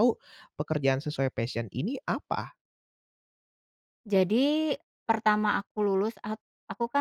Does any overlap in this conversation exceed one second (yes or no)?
no